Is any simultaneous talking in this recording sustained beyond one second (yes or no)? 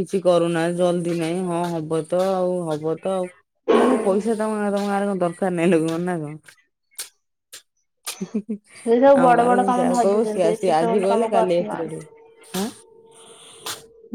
yes